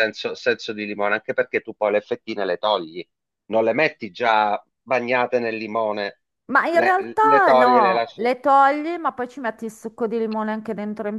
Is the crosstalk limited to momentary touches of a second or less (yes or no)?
no